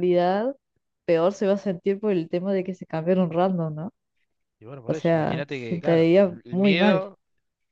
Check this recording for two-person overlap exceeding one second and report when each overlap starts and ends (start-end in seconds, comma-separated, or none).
4.9-7.0